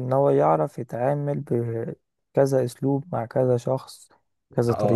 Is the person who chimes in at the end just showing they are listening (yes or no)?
no